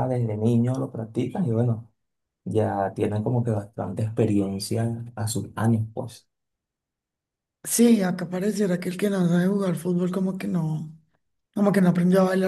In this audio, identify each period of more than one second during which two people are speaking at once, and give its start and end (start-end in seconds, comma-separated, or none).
none